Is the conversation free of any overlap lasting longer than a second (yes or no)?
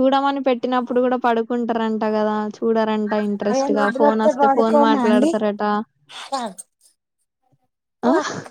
no